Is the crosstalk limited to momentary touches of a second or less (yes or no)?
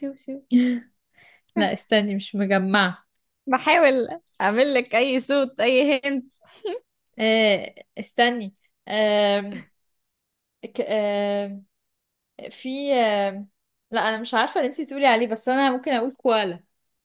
yes